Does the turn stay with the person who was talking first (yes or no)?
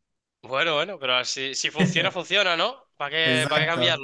no